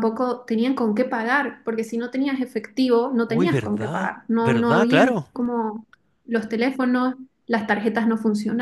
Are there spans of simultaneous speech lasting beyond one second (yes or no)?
yes